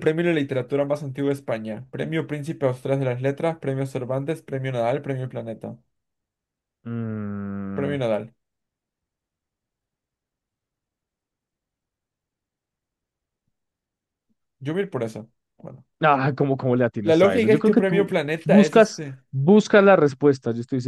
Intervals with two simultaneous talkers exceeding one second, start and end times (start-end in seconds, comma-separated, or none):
17.0-19.2